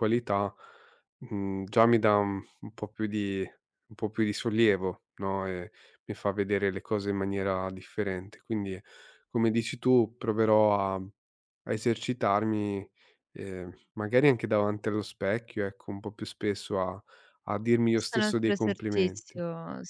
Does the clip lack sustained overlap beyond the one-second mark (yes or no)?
no